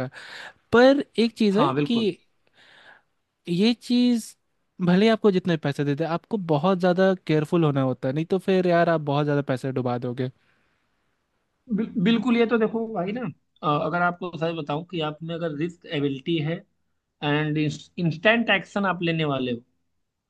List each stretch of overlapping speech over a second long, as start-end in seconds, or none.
none